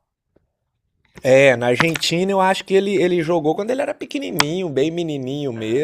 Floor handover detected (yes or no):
yes